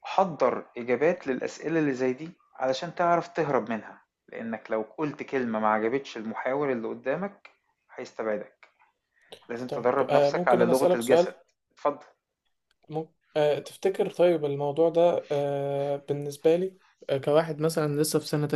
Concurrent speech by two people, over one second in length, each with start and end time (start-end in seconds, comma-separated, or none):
9.7-11.3